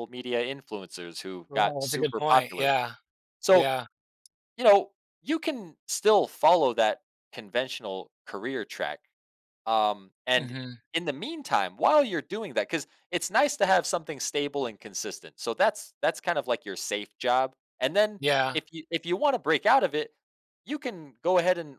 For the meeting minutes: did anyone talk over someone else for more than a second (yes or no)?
yes